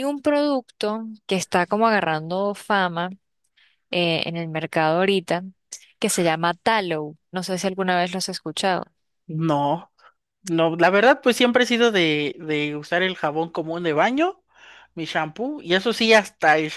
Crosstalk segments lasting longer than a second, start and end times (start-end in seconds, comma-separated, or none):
none